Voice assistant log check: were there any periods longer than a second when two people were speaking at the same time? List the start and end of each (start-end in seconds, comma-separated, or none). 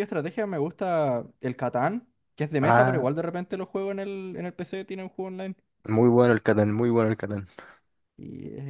none